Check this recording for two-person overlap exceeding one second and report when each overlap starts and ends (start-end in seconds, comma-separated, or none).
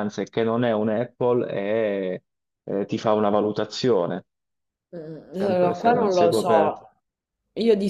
5.4-6.8